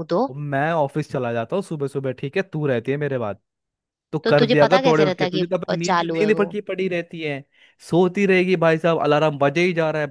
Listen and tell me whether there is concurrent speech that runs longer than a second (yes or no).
yes